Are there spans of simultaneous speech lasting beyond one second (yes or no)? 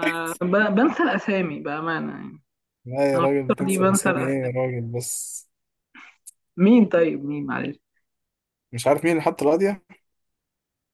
yes